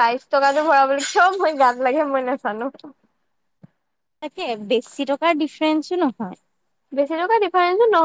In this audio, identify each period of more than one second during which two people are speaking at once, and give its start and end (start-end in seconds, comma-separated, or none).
none